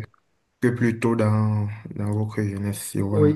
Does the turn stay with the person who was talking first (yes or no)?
no